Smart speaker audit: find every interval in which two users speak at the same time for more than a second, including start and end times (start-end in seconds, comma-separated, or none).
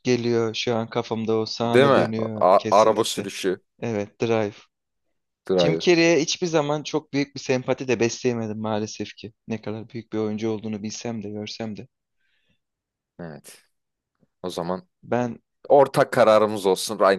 1.6-3.3